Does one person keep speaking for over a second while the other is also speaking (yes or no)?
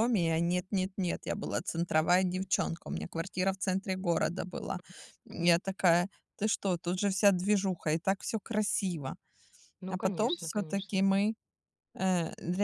yes